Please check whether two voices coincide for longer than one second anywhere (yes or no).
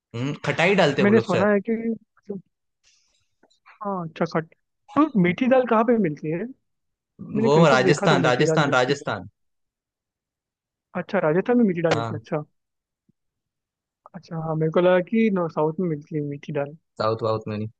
yes